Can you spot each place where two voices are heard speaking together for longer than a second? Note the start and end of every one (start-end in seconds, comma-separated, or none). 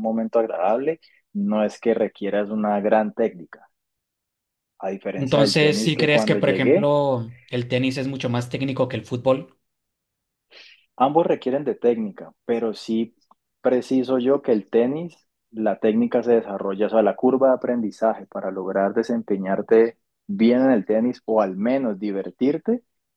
5.2-7.0